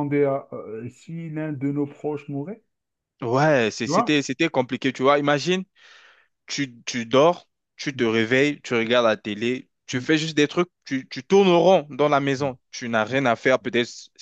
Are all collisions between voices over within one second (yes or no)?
yes